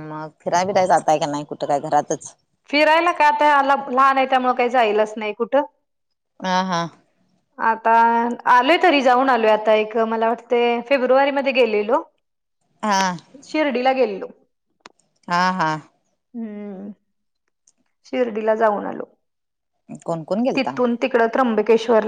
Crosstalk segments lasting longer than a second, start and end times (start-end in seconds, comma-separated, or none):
none